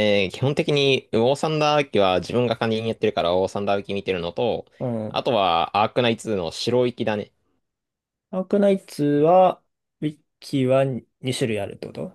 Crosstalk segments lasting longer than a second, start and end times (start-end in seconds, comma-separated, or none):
none